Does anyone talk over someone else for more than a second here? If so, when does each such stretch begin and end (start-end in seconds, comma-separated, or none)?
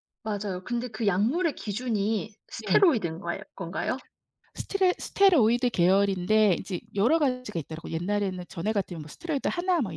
none